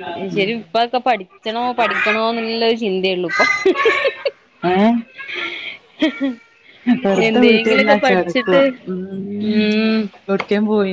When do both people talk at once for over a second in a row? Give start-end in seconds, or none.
7.3-8.6